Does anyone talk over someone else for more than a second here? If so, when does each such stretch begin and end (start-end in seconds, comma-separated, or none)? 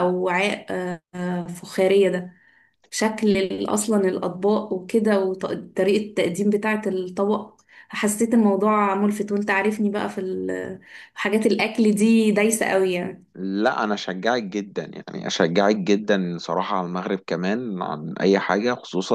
none